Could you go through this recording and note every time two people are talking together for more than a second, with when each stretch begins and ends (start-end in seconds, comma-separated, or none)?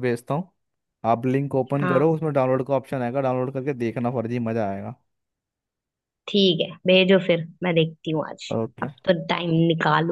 none